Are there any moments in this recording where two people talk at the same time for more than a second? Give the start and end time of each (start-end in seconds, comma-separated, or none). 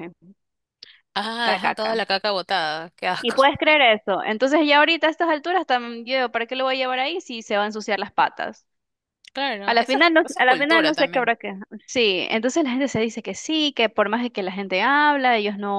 9.7-11.3